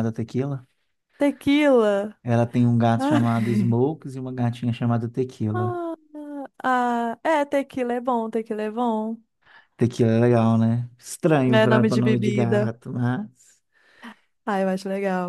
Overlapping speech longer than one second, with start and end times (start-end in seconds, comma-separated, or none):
11.5-12.7